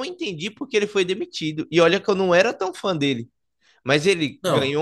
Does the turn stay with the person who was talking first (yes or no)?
yes